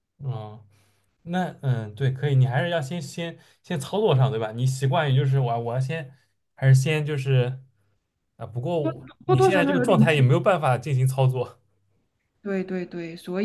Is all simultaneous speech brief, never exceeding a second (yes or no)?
no